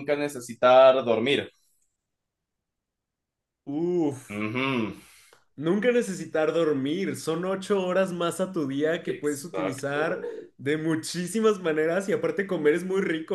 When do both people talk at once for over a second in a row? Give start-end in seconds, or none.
9.1-10.5